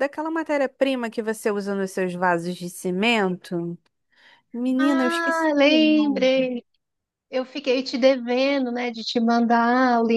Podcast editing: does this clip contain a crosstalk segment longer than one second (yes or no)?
yes